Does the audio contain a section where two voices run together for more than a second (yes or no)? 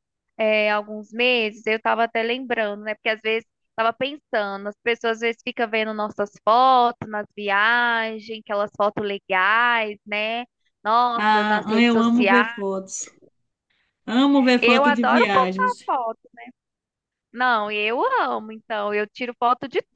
yes